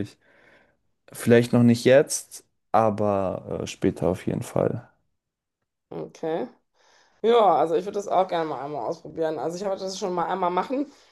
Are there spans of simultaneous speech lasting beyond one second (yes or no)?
no